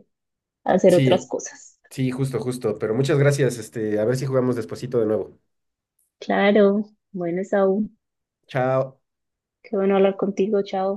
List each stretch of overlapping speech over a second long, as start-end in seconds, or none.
none